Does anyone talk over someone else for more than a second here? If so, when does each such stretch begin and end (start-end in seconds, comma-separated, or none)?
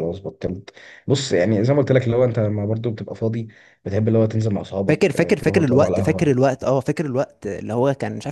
4.9-6.3